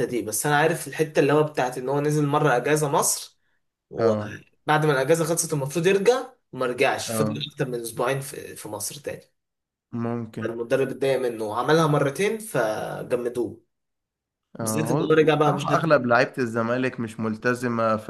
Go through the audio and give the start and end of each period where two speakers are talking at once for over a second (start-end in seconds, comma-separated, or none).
14.6-15.9